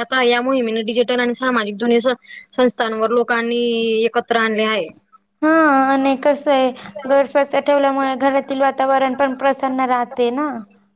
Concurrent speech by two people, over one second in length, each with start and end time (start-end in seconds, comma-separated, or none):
none